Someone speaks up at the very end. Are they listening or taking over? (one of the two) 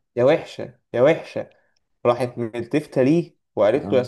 listening